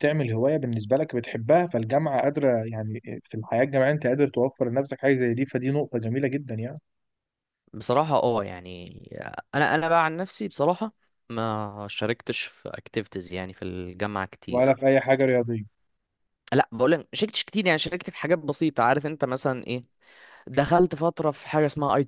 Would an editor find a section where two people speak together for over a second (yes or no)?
no